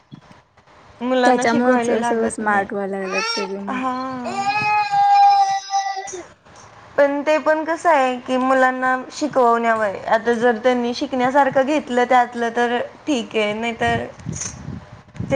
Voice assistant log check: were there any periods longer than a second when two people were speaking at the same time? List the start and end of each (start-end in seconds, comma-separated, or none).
1.2-2.7